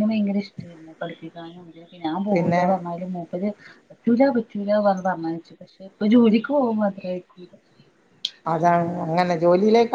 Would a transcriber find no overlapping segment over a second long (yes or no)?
yes